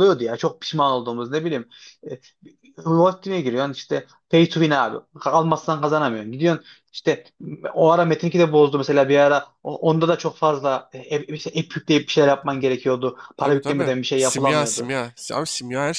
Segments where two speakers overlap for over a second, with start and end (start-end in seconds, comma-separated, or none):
13.4-14.9